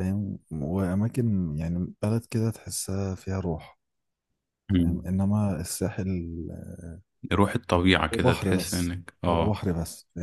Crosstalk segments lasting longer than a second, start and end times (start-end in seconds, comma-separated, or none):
8.1-9.6